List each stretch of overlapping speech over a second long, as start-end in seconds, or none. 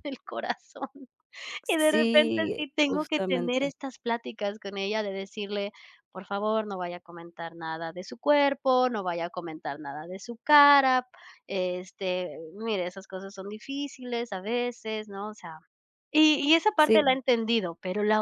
1.7-3.7